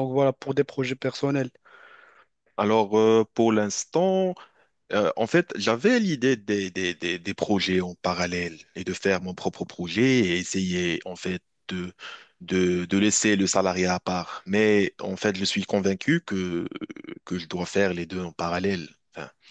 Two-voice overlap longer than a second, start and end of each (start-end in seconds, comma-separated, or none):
none